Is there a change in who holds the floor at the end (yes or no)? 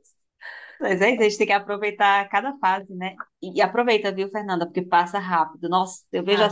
no